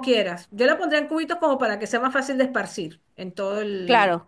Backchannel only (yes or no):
yes